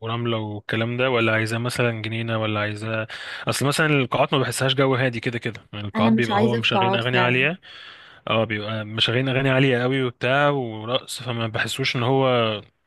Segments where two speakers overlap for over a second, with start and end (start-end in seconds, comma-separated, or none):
6.0-7.5